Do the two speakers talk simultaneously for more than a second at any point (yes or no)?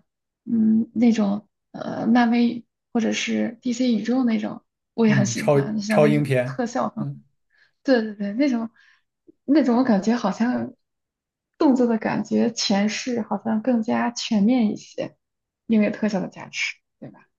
yes